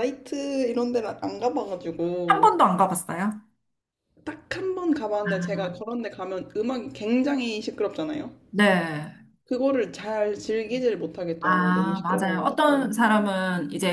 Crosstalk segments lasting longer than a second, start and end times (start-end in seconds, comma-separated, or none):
11.4-13.0